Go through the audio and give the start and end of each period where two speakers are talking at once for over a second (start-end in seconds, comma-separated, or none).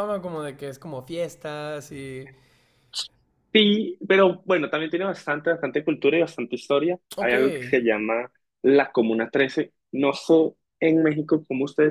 none